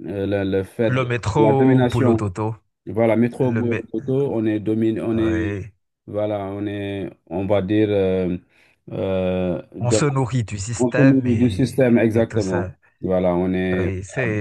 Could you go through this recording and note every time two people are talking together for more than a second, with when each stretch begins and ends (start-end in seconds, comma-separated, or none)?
0.9-2.3, 10.8-12.7